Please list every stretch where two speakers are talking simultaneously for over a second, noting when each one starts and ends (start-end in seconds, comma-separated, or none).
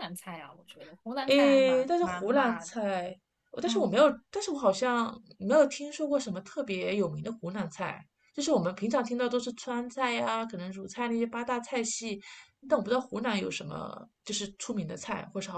1.3-2.8